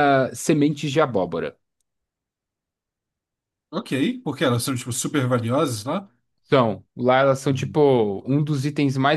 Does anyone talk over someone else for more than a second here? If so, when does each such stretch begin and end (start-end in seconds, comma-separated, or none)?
none